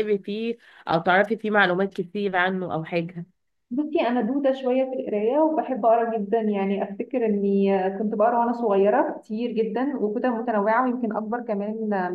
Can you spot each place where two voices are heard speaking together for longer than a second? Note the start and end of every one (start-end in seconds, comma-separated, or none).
none